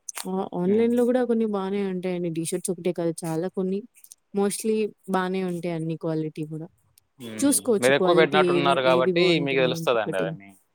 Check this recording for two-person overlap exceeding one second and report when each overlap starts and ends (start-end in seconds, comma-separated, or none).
7.8-10.2